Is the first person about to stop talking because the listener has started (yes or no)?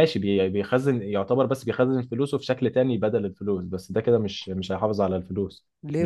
yes